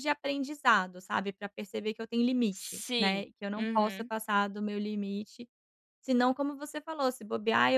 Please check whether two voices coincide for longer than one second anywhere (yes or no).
yes